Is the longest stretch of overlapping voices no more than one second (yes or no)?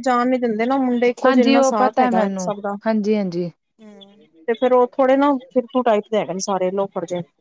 no